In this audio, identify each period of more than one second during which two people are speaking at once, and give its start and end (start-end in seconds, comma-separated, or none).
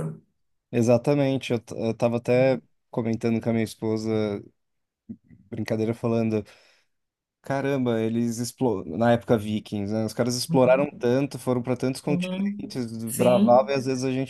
12.1-13.7